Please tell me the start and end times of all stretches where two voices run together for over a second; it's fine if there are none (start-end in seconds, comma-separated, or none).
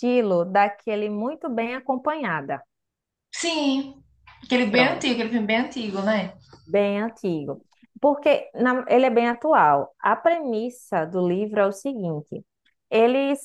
none